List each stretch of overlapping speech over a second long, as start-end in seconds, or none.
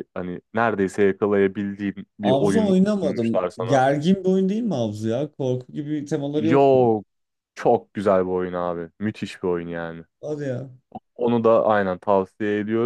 2.2-3.9